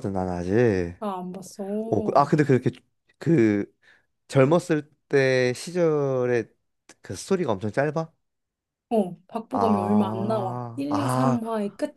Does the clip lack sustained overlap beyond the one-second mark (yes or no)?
no